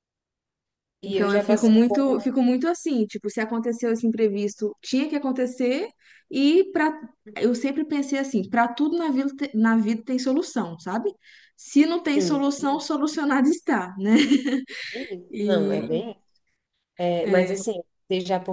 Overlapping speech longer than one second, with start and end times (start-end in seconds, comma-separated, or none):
1.0-2.2